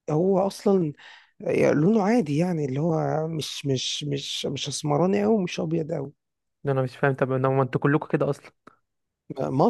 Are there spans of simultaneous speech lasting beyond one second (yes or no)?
no